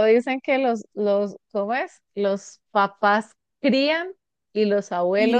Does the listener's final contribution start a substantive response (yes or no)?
yes